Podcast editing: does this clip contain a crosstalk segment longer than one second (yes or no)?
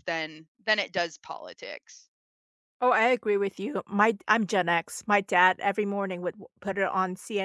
no